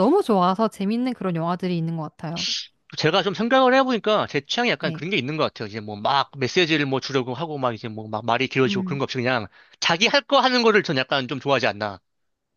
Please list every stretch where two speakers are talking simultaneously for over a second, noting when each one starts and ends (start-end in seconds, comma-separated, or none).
none